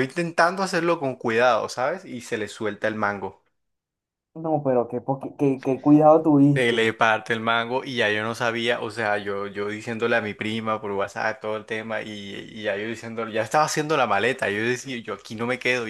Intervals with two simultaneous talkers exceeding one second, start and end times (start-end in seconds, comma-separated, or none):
none